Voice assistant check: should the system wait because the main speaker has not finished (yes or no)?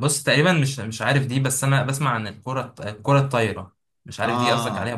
no